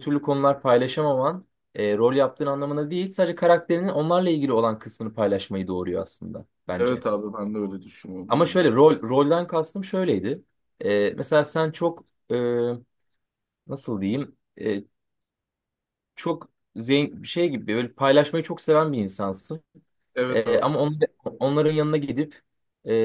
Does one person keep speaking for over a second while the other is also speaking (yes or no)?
no